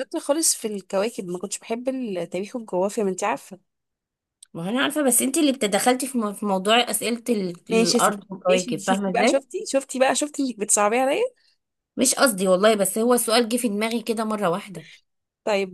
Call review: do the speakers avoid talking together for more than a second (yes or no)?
no